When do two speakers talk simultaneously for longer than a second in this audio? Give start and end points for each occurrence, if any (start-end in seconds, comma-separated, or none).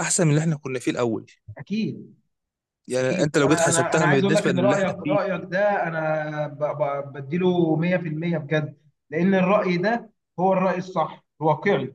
3.0-5.2